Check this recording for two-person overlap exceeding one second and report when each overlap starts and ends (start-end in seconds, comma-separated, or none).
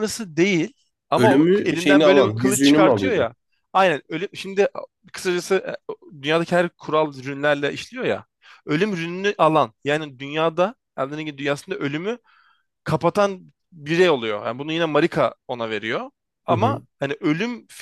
1.2-3.3